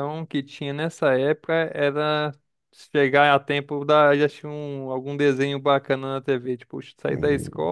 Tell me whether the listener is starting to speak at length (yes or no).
no